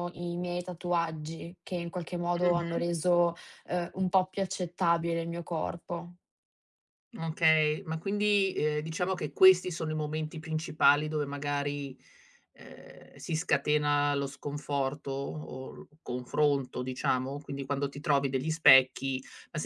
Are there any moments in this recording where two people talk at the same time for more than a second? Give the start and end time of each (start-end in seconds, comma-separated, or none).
none